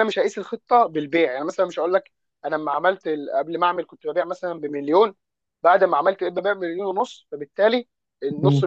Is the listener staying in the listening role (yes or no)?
yes